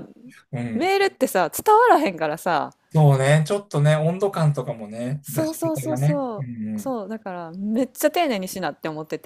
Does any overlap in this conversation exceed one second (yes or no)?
yes